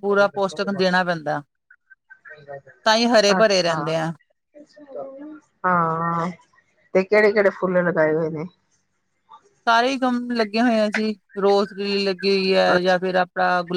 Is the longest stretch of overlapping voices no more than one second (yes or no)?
yes